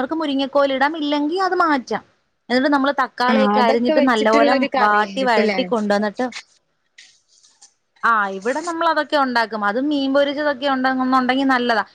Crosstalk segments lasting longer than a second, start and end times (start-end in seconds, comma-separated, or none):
3.3-5.6